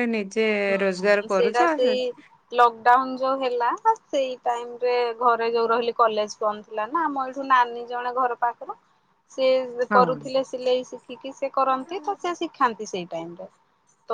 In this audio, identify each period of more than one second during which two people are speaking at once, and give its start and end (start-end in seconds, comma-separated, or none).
none